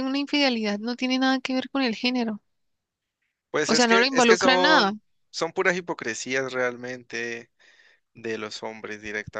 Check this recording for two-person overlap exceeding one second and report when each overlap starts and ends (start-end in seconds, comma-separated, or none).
3.7-4.9